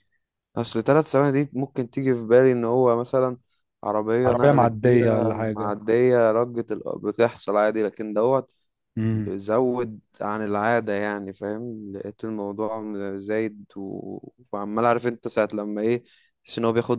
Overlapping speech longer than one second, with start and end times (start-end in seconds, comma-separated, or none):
4.3-5.7